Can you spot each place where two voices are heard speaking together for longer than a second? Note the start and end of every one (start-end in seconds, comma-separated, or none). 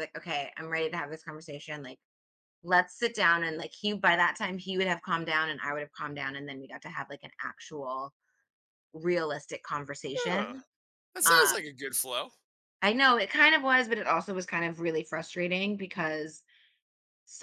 none